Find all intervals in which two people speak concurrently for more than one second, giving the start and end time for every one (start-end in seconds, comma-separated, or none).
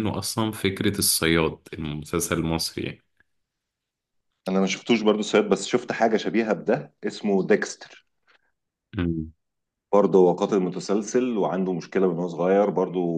none